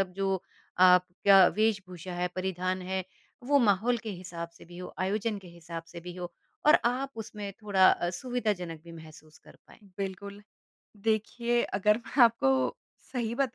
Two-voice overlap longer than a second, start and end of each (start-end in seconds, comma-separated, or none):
none